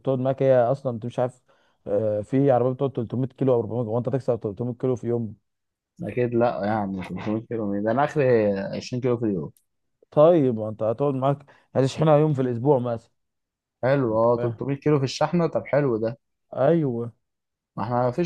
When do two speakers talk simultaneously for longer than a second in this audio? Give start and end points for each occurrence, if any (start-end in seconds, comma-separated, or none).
none